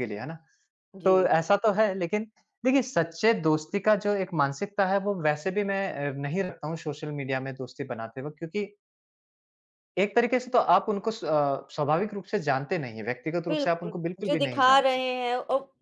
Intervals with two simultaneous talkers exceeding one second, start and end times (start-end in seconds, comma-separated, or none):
13.5-15.0